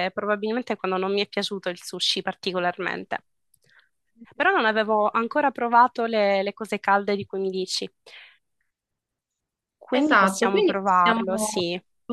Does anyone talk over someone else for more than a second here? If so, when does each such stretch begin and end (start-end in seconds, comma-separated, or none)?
9.9-11.6